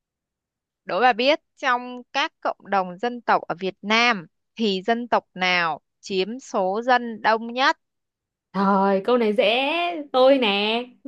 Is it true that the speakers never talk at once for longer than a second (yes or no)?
yes